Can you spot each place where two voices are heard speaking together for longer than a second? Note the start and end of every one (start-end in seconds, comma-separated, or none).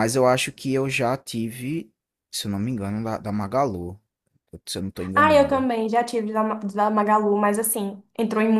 none